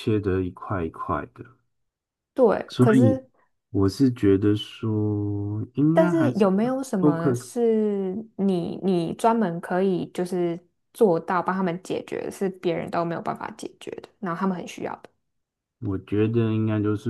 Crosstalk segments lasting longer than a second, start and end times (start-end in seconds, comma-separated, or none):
5.9-7.5